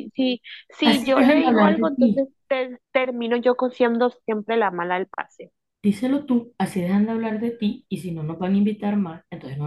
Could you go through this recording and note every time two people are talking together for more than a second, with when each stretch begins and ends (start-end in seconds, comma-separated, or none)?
0.8-2.3